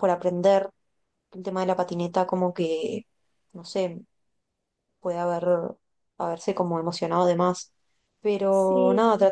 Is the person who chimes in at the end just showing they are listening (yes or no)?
yes